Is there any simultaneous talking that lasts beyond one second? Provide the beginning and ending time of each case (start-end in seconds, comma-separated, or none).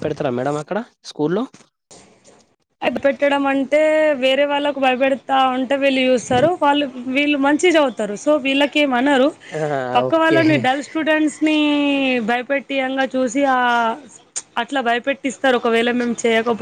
none